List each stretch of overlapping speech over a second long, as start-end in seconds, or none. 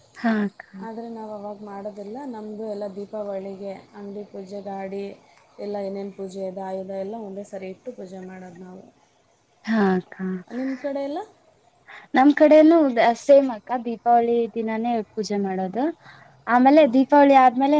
none